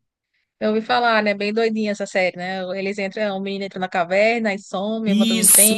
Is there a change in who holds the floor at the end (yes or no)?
yes